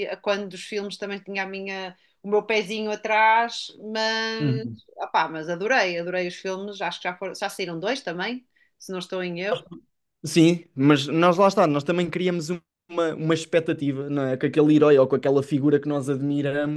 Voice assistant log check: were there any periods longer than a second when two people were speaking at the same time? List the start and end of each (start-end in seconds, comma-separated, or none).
none